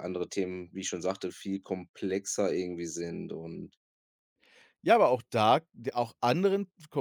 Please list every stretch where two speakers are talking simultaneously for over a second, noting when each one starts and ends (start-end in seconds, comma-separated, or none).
none